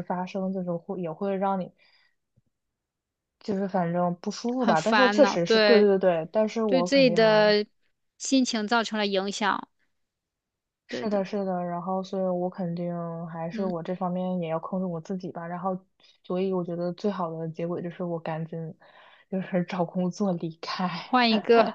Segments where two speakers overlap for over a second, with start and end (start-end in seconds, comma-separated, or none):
4.6-5.9